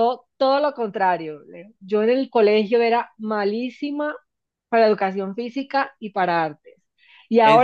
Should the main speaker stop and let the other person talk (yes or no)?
no